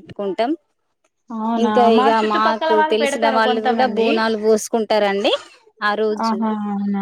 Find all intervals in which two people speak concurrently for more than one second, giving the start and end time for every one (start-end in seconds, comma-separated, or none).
1.6-4.1